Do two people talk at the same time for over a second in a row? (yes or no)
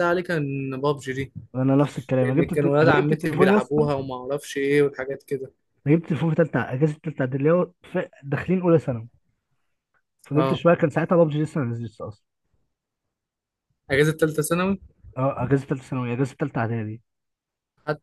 yes